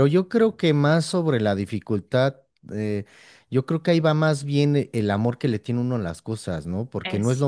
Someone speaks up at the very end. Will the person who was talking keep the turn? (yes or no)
yes